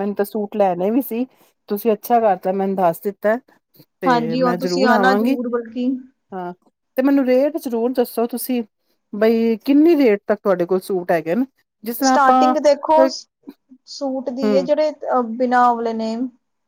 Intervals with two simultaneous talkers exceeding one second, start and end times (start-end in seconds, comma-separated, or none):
4.1-5.4